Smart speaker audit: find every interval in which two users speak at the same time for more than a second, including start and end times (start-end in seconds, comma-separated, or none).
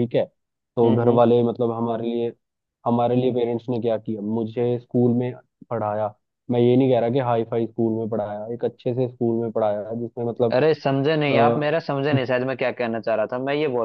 none